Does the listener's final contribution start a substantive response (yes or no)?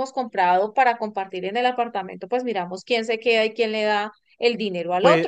yes